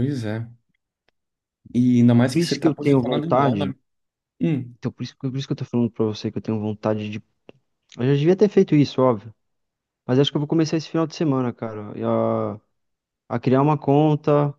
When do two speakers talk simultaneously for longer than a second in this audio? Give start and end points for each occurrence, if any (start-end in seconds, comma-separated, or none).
2.3-3.7